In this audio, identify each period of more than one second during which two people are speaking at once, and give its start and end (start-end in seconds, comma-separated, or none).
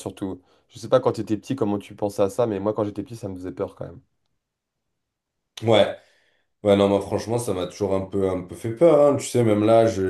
none